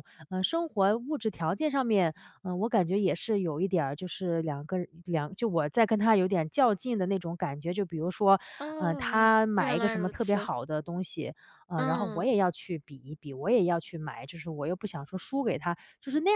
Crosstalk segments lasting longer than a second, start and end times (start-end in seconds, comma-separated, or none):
8.8-10.5